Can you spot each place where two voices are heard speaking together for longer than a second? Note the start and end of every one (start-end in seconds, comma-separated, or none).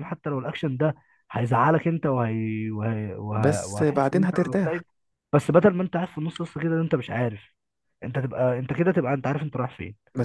3.4-4.8